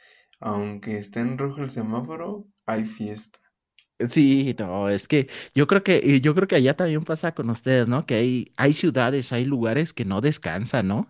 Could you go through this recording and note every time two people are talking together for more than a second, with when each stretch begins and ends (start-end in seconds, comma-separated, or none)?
none